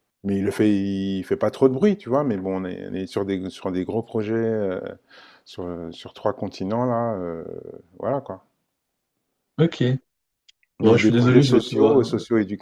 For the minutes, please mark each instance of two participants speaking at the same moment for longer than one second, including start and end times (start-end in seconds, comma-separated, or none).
10.8-12.1